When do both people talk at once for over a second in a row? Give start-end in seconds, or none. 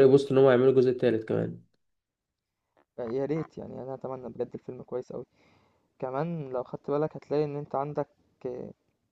none